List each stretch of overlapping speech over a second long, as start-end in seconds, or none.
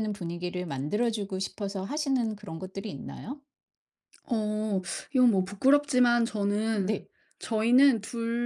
none